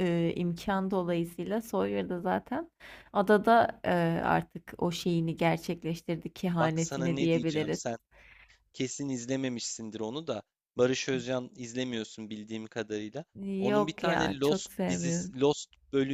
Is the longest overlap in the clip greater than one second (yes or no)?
yes